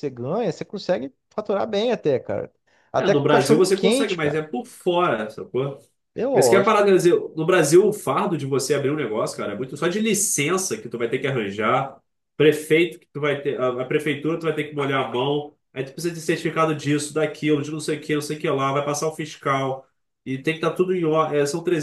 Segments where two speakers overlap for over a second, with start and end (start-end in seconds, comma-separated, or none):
3.0-4.4